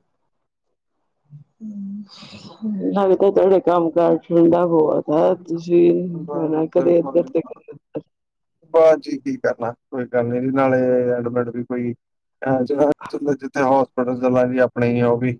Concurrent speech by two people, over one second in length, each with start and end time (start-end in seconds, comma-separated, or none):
5.3-6.7